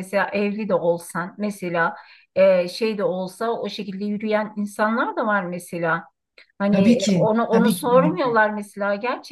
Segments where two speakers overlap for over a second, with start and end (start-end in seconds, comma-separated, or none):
6.7-8.4